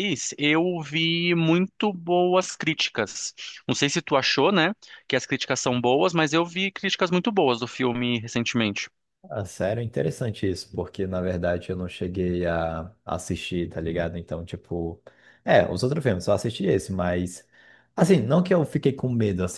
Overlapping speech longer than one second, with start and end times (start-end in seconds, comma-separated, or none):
none